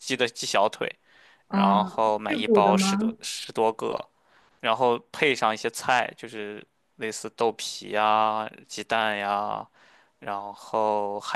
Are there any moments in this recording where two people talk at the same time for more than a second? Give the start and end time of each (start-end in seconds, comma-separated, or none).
1.5-3.2